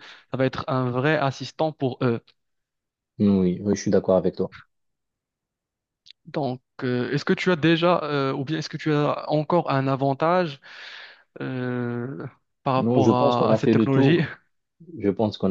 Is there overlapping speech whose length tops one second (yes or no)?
yes